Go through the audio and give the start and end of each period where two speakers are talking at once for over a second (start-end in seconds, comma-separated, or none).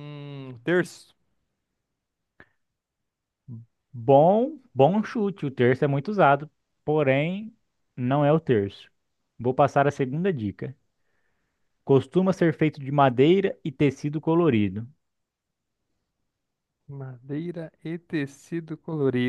none